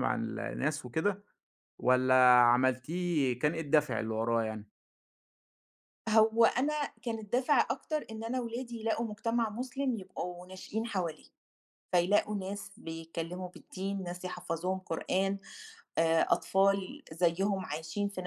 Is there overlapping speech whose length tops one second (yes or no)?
no